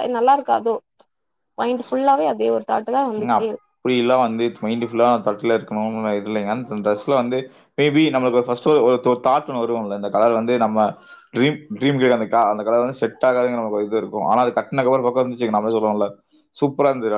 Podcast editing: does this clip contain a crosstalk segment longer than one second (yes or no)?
no